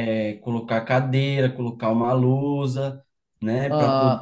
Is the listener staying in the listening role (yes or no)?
yes